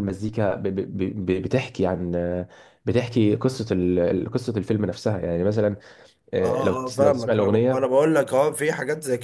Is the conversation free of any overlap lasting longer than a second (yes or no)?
no